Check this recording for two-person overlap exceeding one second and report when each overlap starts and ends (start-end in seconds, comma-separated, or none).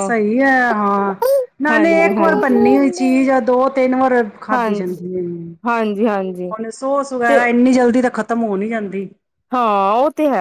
1.7-3.0